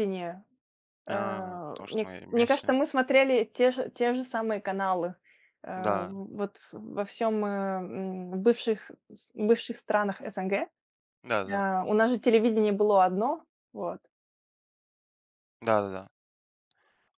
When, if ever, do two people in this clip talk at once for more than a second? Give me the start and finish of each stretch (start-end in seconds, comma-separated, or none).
1.1-2.7